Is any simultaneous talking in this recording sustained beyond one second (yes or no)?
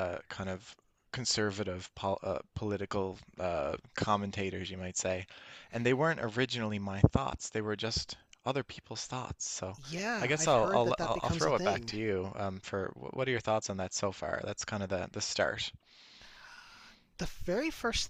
yes